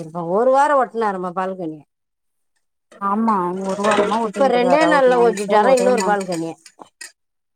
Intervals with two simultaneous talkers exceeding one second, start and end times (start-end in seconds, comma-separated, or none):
4.3-6.1